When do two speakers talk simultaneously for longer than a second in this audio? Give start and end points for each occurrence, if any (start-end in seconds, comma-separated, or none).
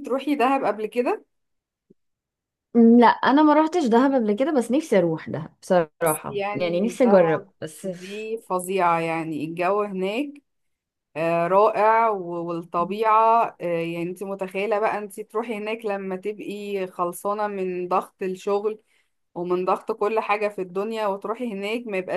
6.3-8.3